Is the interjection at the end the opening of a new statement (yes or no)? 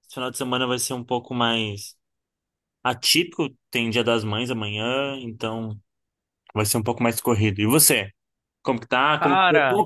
no